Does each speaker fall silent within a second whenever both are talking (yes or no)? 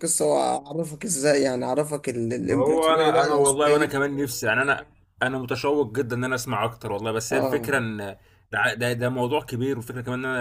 no